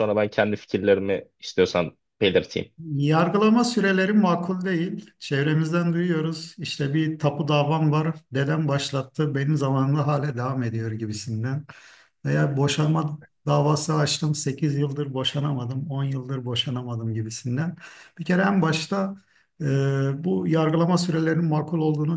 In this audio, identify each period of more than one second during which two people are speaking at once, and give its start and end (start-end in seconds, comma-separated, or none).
none